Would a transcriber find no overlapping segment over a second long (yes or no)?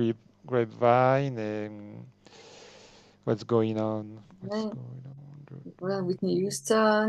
yes